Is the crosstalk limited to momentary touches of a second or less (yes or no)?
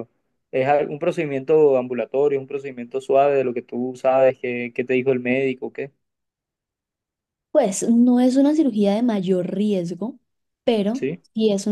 yes